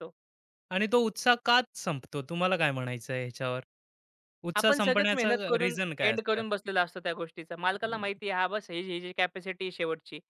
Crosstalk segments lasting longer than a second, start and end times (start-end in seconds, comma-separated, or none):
4.6-6.4